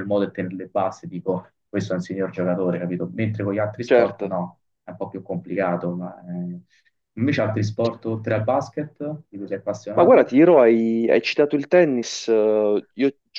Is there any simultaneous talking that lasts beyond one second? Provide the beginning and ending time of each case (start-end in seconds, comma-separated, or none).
none